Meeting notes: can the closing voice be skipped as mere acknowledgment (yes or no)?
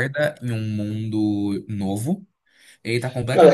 no